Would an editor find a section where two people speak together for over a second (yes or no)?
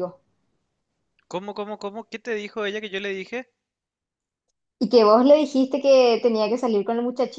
no